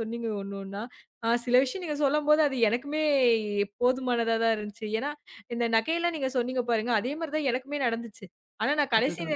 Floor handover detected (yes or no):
no